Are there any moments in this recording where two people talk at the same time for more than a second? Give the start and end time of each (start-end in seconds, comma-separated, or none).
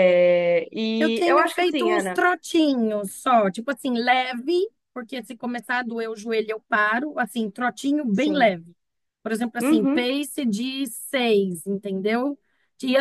1.0-2.2